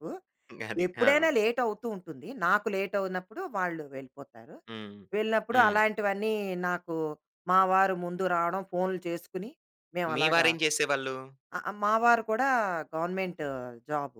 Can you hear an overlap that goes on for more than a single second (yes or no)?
no